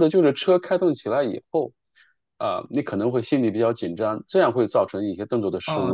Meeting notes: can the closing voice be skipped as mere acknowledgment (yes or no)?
no